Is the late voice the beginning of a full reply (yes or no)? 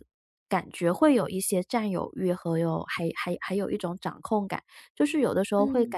no